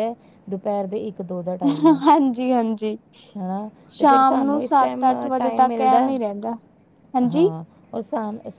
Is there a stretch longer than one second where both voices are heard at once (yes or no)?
yes